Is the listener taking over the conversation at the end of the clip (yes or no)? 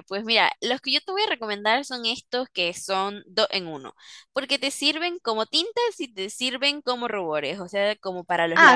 yes